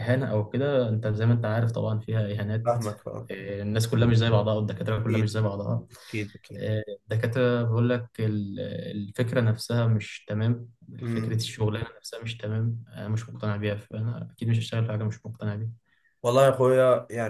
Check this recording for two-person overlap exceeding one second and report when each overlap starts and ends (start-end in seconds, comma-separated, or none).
none